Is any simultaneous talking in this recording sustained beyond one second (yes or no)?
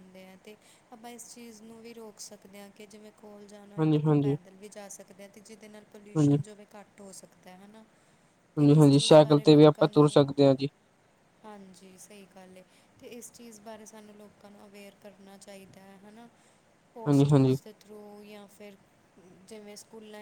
yes